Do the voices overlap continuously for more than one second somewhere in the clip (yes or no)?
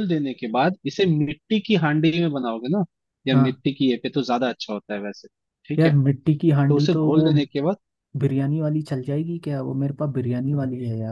no